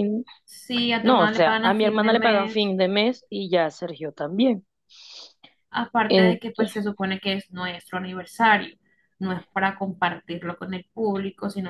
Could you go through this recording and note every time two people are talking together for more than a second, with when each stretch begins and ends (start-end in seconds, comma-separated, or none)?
1.0-2.7